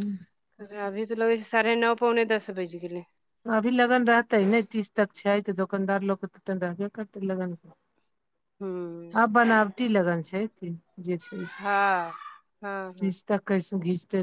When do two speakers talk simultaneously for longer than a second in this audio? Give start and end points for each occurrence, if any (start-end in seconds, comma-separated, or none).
none